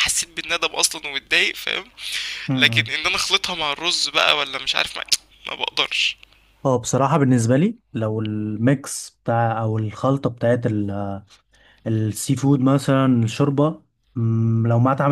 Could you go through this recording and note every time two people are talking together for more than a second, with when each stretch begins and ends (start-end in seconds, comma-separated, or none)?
none